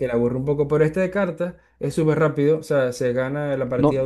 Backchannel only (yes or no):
yes